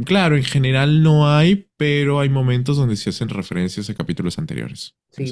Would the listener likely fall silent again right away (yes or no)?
no